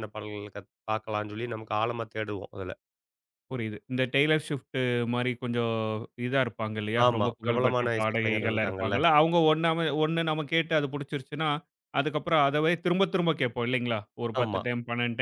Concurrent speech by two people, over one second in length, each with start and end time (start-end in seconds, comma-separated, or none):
7.1-8.9